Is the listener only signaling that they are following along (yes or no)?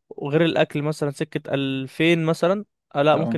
yes